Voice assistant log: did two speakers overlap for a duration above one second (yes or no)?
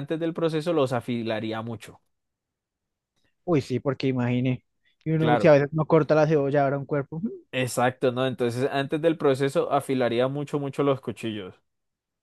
no